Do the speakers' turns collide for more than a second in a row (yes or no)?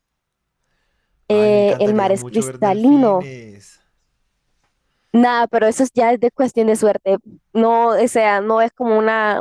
yes